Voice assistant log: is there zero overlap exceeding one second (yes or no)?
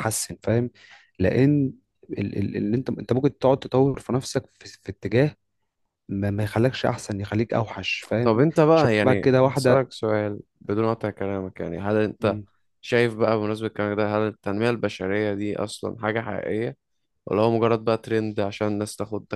no